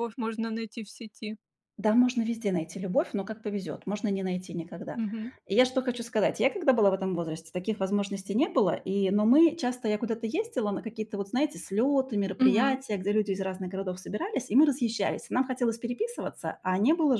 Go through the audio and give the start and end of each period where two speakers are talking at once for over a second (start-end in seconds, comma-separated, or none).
none